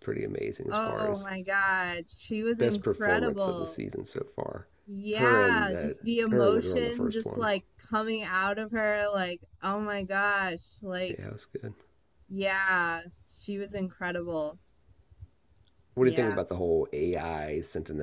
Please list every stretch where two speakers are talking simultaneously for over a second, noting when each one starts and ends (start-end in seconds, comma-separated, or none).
2.6-3.8, 5.1-7.5